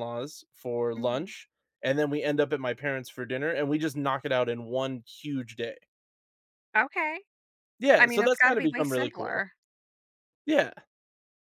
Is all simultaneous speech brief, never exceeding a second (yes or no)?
no